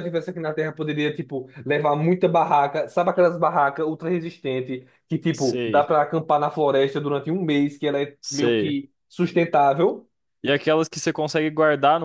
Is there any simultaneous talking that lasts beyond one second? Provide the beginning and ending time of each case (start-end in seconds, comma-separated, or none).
none